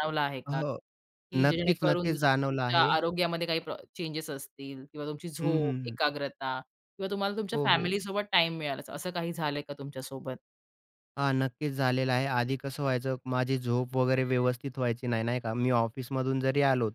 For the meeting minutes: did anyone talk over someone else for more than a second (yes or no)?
yes